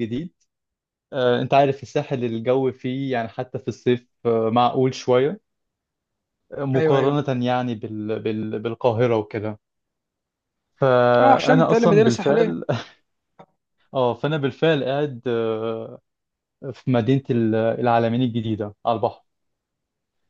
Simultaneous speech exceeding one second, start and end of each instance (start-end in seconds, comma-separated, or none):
11.2-12.5